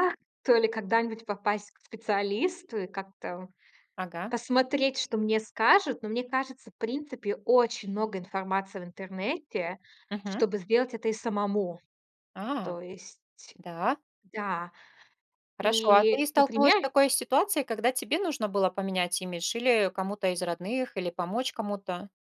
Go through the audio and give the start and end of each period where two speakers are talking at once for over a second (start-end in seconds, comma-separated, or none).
15.6-16.9